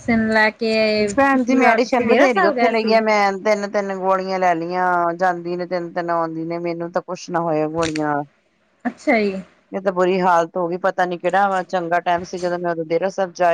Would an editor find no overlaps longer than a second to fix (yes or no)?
no